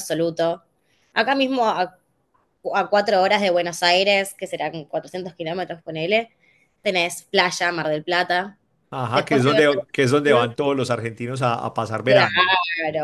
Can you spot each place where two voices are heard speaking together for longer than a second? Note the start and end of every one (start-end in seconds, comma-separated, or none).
9.1-10.5